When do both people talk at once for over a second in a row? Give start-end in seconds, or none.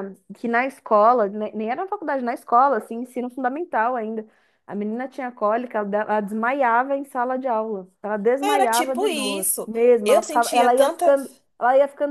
8.4-11.1